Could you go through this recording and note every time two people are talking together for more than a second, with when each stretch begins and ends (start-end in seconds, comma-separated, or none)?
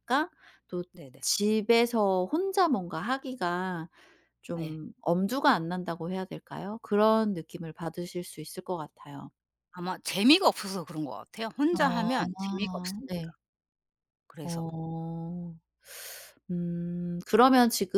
11.8-13.1